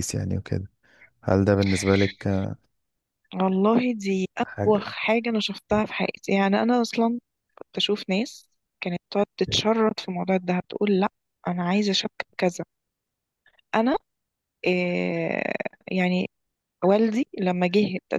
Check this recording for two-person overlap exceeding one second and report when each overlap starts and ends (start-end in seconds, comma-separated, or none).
none